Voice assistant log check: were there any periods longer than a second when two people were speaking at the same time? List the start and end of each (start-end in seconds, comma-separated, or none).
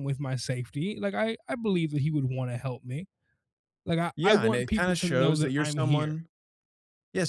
4.2-6.2